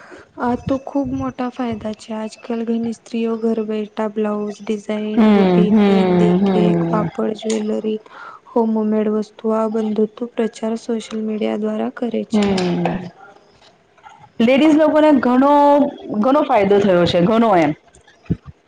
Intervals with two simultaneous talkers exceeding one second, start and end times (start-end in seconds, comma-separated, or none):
5.2-7.0